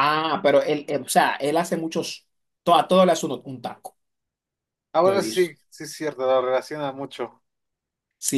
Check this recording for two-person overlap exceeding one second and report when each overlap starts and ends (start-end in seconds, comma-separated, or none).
none